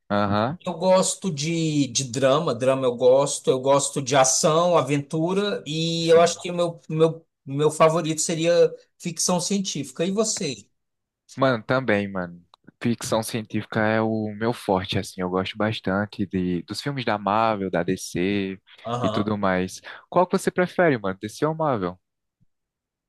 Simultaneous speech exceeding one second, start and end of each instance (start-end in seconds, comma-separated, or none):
none